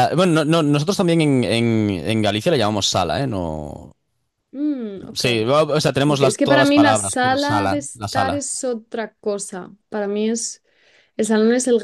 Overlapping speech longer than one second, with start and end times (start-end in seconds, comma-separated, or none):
6.1-8.4